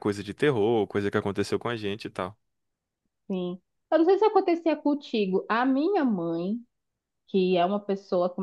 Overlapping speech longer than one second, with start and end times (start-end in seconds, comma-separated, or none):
none